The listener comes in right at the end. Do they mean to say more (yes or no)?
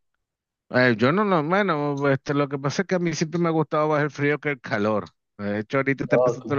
no